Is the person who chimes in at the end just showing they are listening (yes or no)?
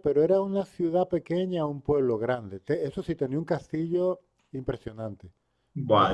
no